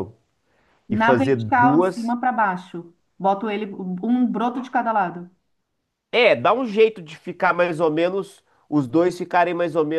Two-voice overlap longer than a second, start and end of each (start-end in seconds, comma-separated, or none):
0.9-2.2